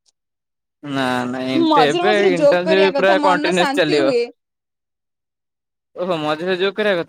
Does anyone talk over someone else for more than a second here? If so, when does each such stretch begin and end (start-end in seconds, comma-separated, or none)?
1.7-4.1